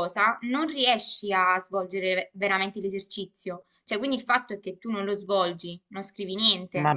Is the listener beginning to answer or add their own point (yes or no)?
yes